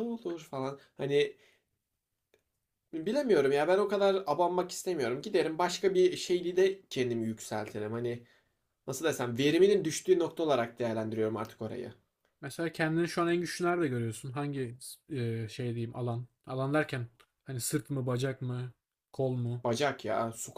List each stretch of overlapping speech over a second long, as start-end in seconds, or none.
none